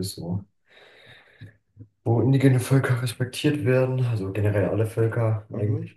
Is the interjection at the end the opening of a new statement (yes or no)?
yes